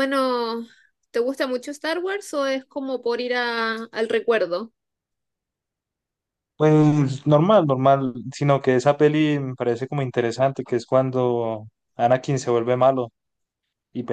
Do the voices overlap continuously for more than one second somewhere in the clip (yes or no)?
no